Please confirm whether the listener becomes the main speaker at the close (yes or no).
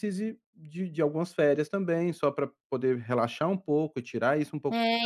yes